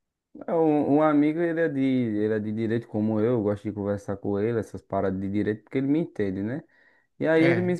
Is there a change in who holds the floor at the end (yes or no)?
no